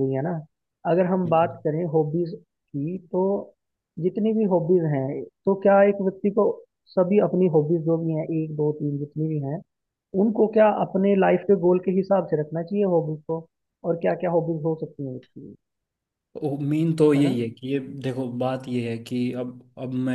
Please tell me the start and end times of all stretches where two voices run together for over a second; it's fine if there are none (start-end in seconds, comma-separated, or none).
none